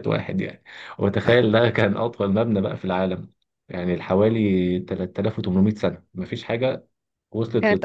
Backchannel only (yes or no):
no